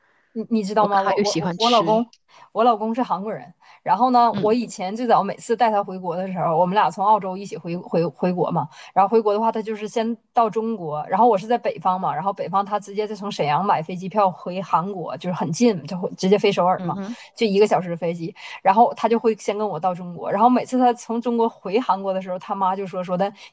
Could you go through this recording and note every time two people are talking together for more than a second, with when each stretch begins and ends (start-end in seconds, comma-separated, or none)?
0.8-2.0